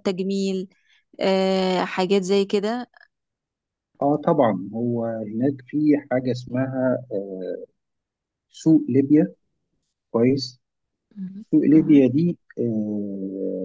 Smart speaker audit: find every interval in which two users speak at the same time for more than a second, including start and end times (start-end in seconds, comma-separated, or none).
none